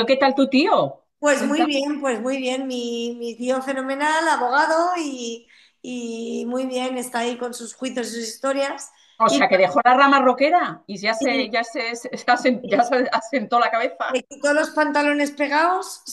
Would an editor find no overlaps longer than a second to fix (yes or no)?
yes